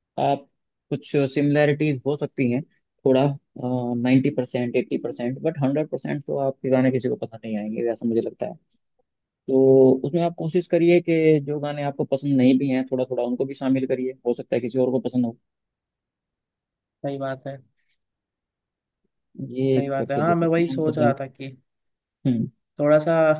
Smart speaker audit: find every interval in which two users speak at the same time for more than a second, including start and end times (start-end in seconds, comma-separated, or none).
19.7-21.1